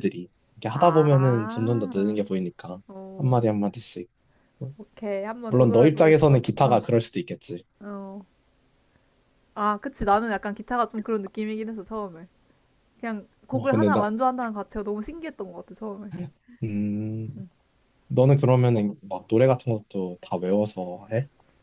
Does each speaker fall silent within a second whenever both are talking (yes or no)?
no